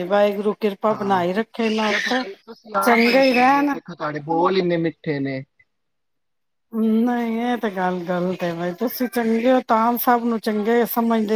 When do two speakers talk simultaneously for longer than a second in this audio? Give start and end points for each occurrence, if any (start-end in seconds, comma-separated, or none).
none